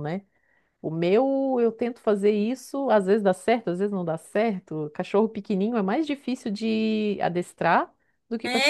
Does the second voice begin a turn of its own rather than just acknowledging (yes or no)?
yes